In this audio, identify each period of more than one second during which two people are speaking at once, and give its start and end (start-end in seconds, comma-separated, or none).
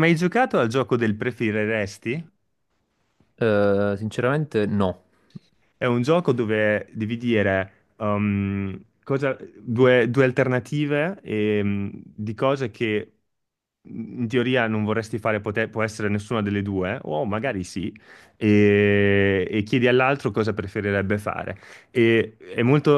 none